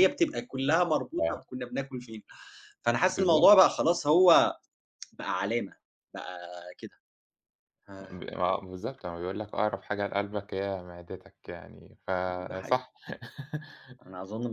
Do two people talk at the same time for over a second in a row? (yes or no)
no